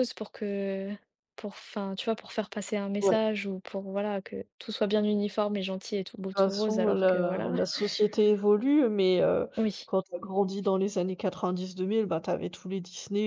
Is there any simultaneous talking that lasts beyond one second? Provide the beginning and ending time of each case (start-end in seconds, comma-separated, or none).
6.3-7.5